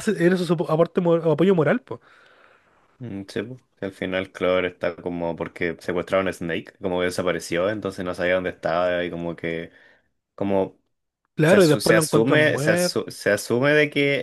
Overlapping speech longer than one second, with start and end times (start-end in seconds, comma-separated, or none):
11.5-13.0